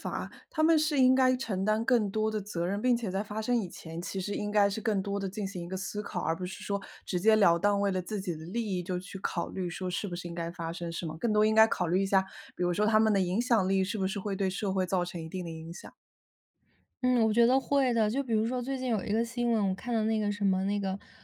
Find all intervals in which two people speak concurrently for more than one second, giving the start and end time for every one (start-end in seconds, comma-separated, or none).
none